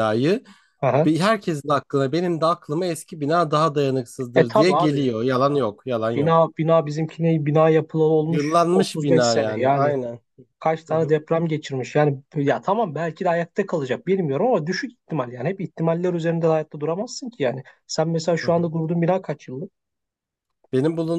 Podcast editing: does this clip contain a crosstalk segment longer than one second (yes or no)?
yes